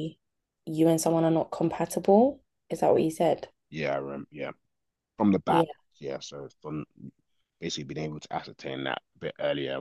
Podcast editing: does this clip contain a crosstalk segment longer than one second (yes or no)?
no